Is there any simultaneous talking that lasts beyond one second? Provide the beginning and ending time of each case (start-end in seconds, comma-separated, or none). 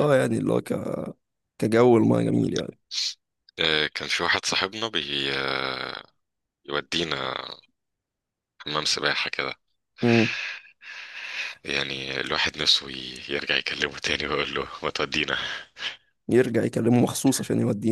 none